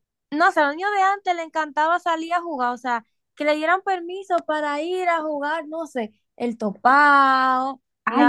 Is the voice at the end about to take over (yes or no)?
yes